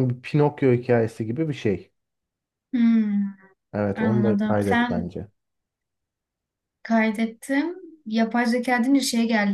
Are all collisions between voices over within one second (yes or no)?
no